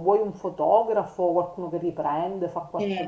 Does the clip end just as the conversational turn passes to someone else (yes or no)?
yes